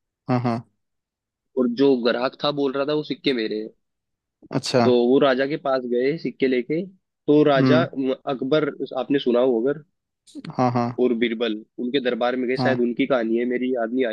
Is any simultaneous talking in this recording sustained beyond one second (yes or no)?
no